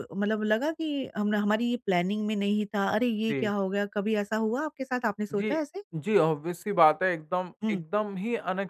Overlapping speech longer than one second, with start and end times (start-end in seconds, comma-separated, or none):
none